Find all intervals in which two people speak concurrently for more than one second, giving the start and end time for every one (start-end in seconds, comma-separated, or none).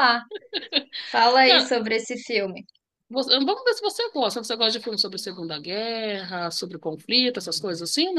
none